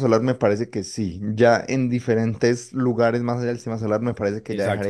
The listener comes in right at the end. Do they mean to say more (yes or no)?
no